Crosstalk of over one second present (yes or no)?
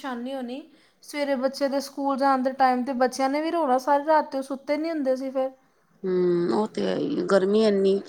no